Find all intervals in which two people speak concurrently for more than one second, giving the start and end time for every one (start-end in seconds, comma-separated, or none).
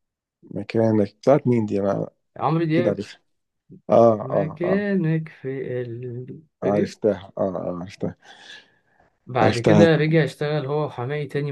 none